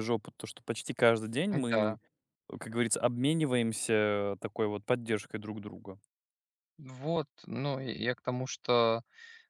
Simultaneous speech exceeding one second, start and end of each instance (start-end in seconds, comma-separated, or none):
none